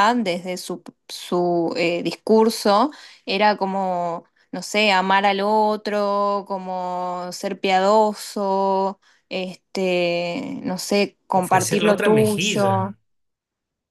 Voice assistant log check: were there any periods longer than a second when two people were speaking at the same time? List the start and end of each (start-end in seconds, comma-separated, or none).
11.3-12.9